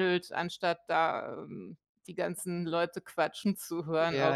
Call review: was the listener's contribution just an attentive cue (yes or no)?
no